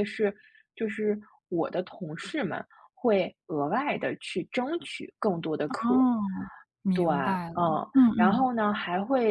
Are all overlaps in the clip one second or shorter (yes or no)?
yes